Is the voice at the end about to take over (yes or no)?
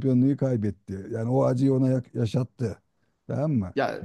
yes